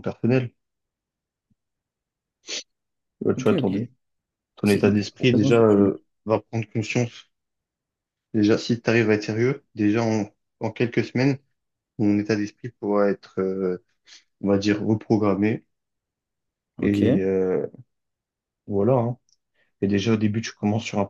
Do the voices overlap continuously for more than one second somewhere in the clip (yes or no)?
yes